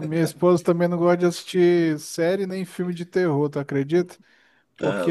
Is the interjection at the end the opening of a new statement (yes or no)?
no